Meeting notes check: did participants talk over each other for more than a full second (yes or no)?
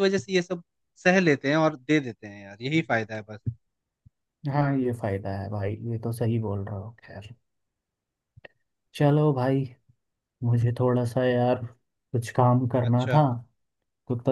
no